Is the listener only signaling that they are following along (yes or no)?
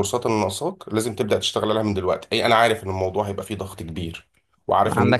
no